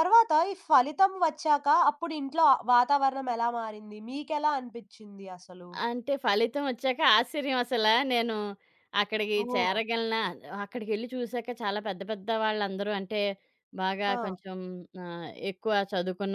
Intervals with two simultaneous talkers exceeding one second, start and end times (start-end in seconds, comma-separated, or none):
none